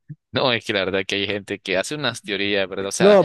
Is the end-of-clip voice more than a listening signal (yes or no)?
yes